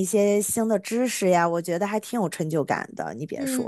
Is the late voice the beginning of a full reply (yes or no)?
yes